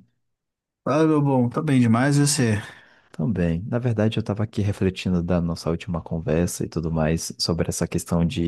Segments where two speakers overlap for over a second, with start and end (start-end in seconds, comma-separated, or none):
none